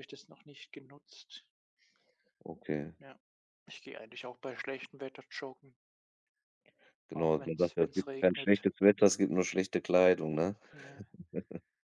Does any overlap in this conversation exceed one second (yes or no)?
yes